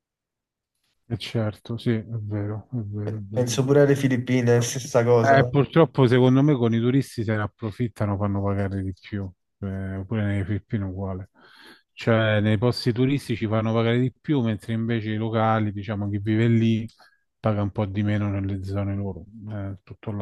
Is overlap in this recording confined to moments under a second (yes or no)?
yes